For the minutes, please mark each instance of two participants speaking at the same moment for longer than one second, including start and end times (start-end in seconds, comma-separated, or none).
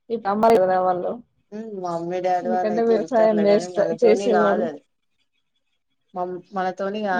2.4-4.6